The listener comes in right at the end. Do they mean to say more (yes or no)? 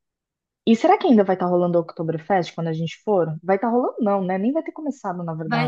yes